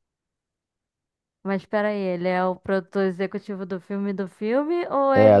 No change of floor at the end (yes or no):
no